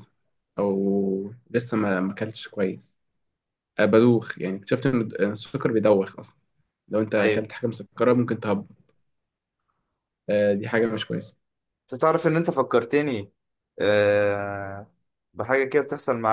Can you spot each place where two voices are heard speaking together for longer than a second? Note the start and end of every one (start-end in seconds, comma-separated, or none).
none